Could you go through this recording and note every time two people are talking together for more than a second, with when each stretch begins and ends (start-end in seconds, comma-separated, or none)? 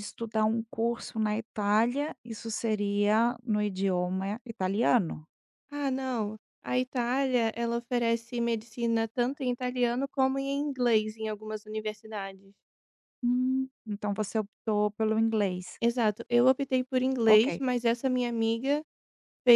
none